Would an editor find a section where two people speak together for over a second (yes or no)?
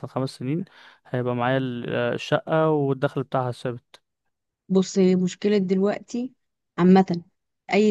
no